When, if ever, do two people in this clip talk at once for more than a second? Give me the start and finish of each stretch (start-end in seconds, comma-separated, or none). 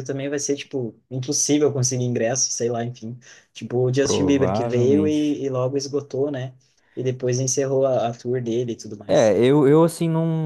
4.0-5.4